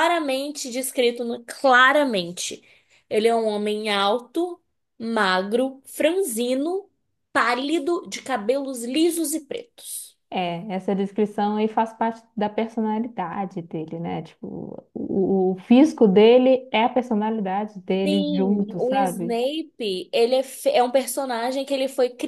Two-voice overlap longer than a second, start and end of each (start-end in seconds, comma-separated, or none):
18.1-19.4